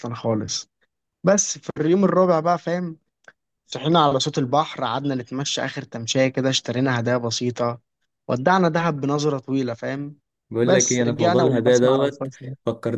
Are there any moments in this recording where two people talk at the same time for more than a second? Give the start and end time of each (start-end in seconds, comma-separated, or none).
10.6-12.3